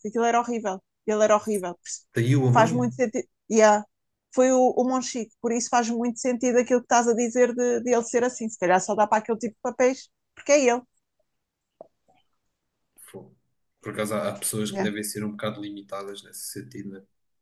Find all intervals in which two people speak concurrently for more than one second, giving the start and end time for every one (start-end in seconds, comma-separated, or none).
none